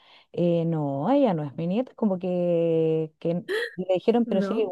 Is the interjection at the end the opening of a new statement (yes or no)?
no